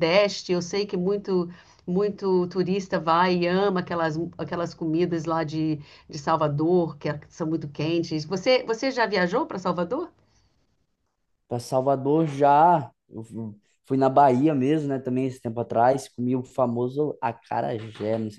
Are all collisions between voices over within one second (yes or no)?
yes